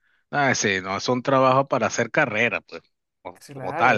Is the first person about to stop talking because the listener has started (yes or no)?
yes